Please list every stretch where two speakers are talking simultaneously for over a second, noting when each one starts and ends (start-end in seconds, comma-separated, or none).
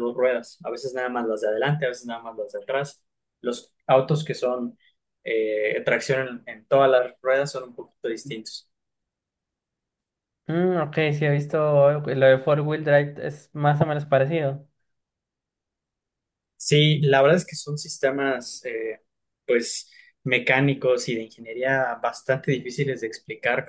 none